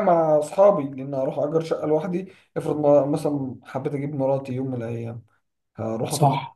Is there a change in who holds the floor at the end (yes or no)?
no